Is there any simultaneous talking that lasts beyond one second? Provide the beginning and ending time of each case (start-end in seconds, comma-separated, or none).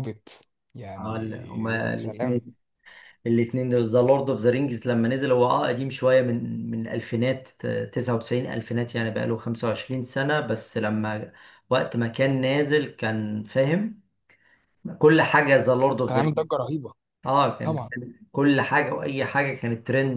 none